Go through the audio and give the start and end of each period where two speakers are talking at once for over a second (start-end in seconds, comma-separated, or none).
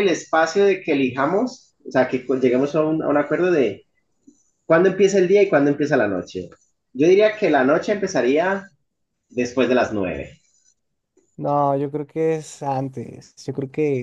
none